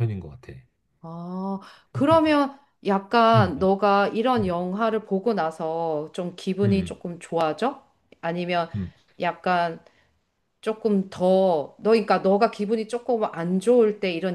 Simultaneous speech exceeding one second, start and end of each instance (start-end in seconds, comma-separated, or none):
none